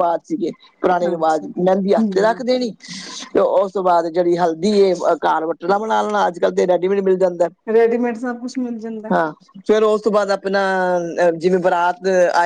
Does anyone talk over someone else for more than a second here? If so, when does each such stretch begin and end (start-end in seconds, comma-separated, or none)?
1.1-2.5